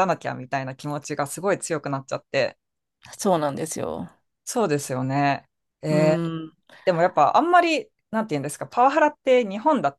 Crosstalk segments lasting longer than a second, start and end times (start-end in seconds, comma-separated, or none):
none